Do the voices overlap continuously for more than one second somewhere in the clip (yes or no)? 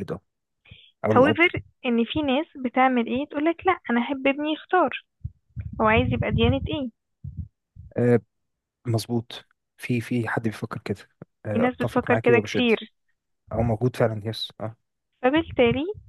yes